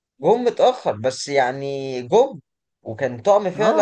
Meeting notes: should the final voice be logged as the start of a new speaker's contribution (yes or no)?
yes